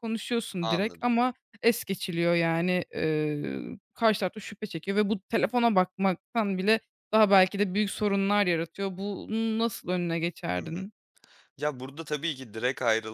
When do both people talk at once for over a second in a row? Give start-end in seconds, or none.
none